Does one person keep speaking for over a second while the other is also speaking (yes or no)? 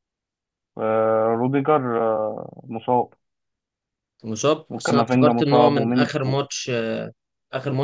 yes